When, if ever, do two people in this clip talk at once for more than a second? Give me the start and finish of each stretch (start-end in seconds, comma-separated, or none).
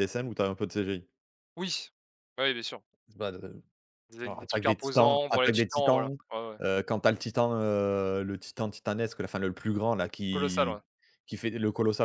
4.2-6.2